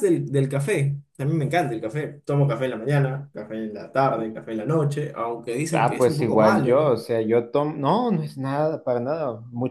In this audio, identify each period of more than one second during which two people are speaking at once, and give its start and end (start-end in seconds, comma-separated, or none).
5.7-7.0